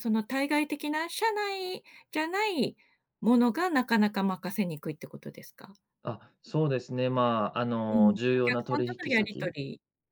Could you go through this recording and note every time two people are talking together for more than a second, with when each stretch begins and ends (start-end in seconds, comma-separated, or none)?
7.9-9.5